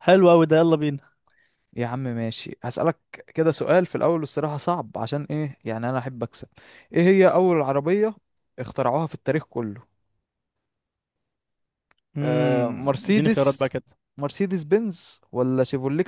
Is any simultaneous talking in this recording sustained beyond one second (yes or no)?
yes